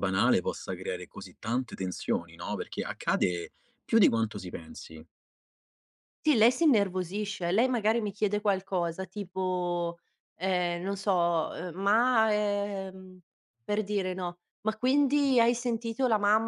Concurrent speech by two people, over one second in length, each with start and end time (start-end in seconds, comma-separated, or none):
none